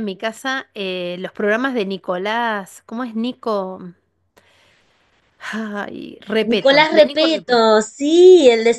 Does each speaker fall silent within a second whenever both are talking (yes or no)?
no